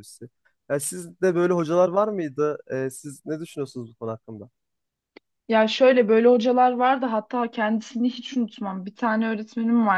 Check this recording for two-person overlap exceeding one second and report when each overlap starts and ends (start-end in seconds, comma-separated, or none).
none